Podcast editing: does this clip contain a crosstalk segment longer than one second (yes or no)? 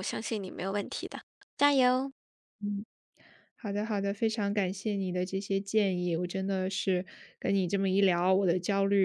no